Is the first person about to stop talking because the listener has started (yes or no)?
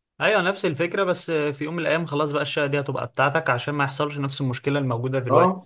yes